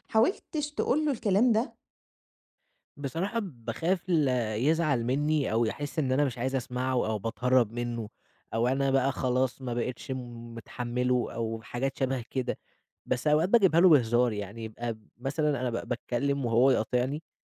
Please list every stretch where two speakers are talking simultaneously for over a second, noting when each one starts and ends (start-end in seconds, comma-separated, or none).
none